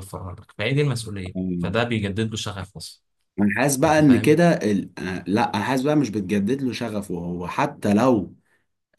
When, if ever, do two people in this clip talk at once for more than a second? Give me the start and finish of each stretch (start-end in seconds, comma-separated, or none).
none